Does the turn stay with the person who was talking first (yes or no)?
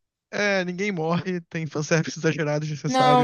no